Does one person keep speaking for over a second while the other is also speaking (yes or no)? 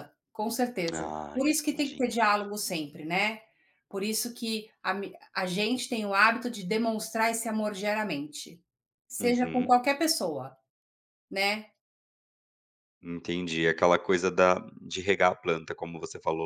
yes